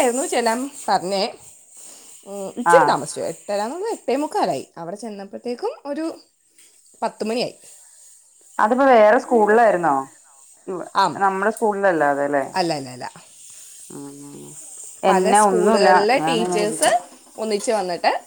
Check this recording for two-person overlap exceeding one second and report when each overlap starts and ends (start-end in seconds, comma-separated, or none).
15.1-16.9